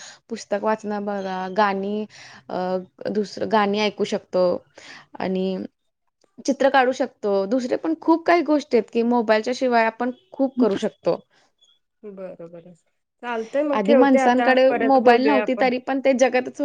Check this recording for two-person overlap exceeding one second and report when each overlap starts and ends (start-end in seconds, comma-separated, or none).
13.8-15.7